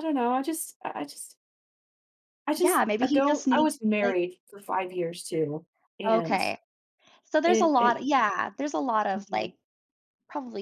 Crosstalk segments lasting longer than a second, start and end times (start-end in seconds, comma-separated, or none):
2.6-4.2